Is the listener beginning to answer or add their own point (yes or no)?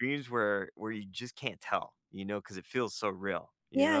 yes